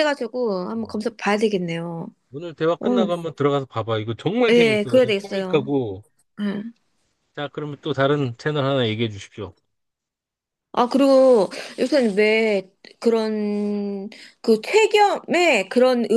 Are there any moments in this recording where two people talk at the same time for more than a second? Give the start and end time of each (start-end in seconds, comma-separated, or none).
4.5-5.7